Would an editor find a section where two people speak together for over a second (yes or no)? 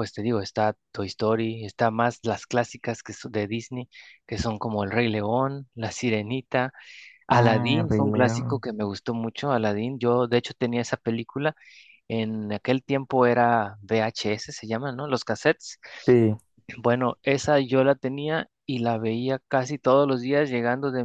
yes